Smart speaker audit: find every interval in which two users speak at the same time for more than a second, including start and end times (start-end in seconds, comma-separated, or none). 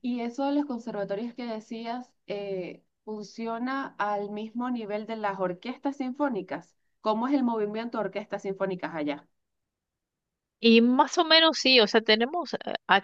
none